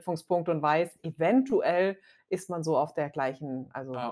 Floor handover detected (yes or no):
yes